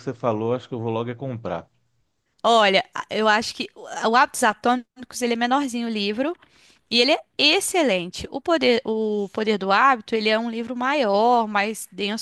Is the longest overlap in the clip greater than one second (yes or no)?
no